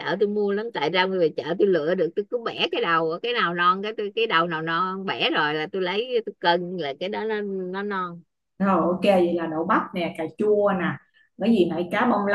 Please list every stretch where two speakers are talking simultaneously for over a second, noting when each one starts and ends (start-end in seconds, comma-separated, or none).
none